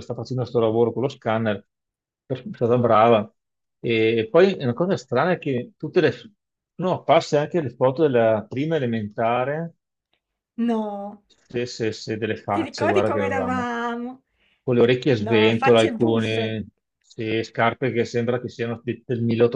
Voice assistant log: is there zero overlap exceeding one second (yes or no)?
no